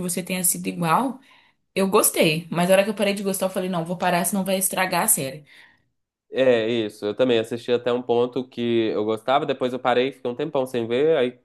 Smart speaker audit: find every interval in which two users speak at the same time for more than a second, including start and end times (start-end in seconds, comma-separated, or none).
none